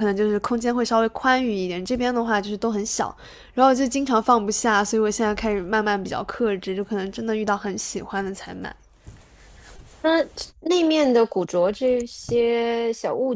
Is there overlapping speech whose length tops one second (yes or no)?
no